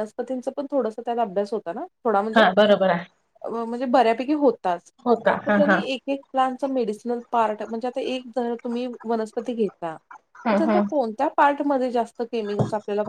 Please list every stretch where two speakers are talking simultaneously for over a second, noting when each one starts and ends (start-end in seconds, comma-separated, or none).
none